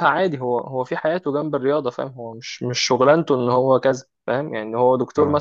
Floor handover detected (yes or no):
no